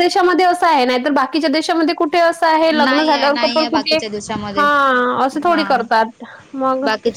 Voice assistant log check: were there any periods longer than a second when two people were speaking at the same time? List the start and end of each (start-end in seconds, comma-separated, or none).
2.7-4.0